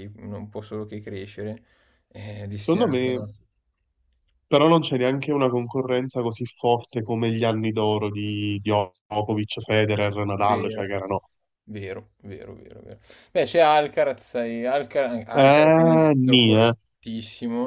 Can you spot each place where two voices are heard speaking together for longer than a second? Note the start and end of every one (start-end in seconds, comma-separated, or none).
15.3-16.7